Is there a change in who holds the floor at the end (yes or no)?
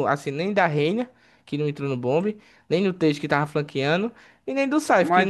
yes